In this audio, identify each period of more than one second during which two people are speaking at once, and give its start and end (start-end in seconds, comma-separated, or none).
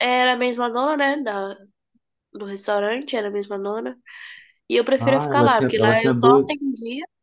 5.0-6.5